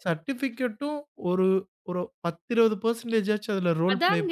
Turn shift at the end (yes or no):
yes